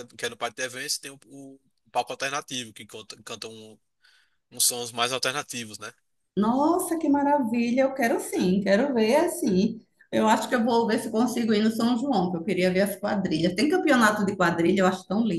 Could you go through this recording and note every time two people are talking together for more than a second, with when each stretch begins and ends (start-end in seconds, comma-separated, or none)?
none